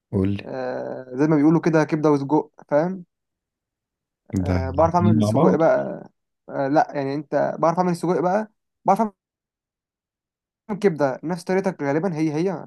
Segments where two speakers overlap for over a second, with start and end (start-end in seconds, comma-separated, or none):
4.4-5.6